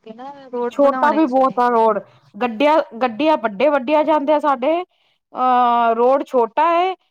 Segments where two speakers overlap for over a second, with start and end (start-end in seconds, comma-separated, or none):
0.7-2.0